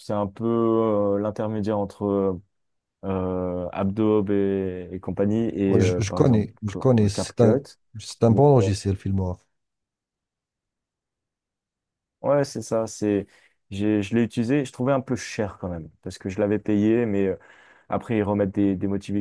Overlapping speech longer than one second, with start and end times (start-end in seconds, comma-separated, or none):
5.7-7.6